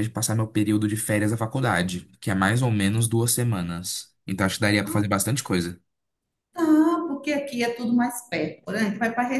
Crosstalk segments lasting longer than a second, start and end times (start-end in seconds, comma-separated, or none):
none